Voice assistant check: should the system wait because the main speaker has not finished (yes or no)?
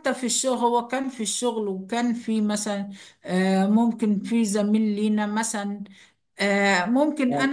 yes